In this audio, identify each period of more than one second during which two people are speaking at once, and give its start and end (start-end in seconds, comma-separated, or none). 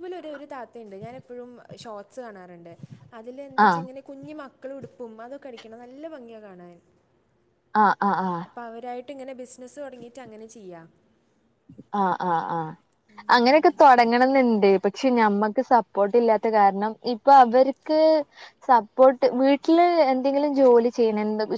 none